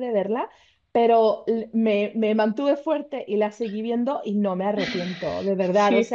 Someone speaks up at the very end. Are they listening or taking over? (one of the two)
listening